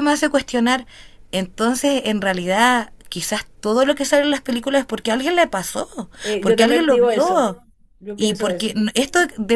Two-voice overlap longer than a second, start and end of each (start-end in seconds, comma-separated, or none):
6.2-7.5